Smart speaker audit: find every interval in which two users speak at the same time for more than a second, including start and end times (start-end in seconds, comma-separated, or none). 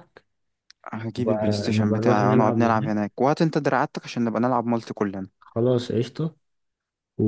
1.2-2.9